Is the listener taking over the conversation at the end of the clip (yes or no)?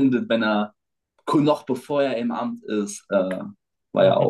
yes